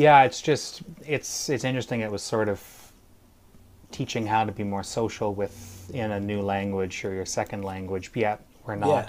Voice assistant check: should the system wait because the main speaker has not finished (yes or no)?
yes